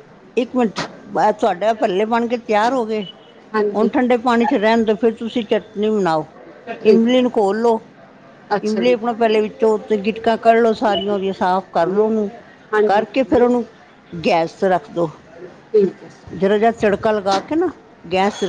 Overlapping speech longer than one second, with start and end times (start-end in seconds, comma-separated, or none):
none